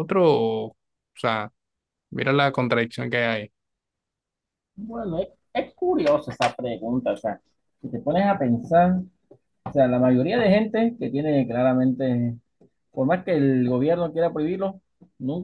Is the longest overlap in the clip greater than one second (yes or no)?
no